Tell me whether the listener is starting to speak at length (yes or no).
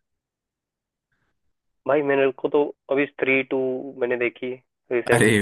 yes